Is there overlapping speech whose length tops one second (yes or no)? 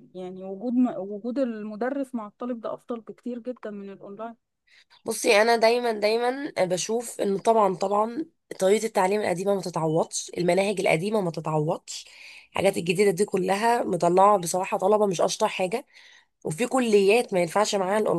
no